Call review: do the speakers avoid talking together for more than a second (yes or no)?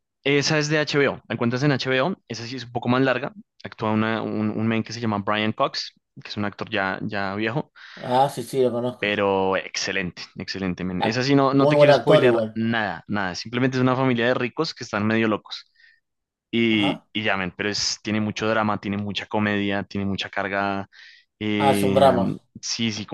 no